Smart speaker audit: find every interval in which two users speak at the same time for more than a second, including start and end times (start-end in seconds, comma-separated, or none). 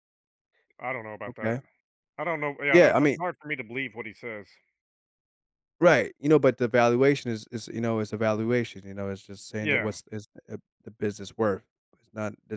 none